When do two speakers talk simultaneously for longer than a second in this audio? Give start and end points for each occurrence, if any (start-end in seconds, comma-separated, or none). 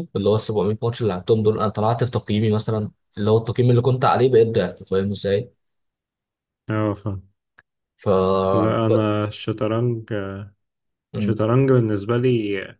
none